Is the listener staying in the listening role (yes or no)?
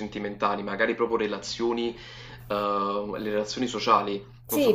no